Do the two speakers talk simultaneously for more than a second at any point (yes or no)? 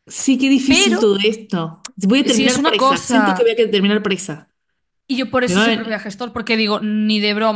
yes